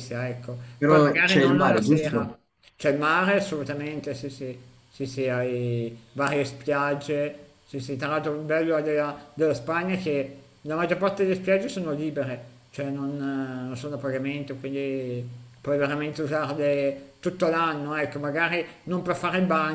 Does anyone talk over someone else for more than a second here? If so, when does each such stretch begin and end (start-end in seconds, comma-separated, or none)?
0.8-2.3